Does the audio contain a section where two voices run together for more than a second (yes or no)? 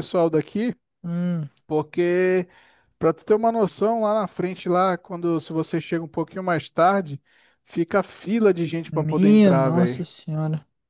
yes